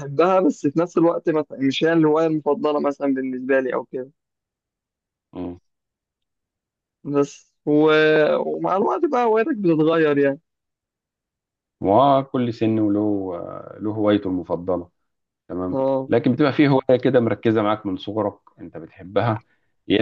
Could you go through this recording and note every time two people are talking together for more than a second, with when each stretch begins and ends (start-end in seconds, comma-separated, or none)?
none